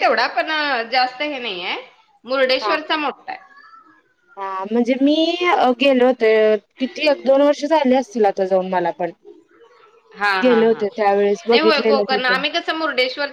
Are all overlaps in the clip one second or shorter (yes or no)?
yes